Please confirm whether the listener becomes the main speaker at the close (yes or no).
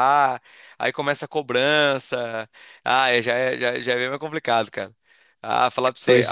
no